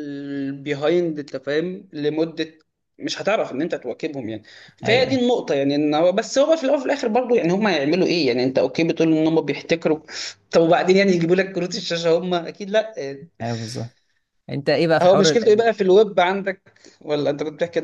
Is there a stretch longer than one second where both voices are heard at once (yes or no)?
no